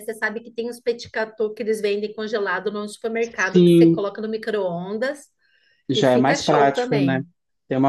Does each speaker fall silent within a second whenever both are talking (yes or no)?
no